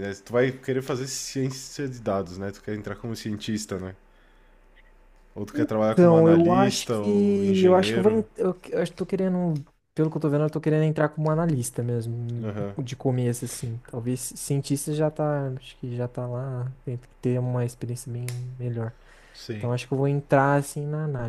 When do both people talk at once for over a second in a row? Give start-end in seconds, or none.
5.9-8.2